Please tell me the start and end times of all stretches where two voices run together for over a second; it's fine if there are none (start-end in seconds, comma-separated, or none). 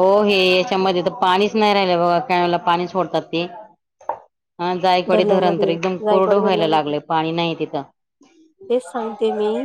5.1-6.9